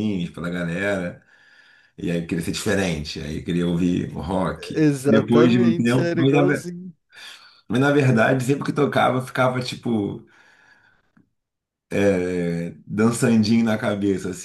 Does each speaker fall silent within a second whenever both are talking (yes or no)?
no